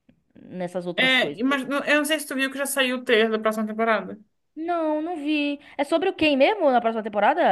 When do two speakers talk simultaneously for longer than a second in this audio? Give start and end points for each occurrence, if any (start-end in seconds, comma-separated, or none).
none